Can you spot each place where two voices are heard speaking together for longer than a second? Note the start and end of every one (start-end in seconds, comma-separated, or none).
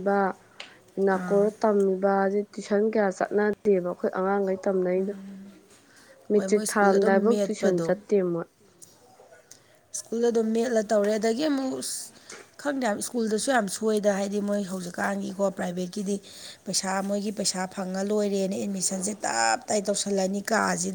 6.3-7.9